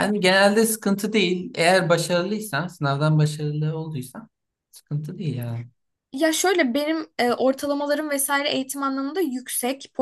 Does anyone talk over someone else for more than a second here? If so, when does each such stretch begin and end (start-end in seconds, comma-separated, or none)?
none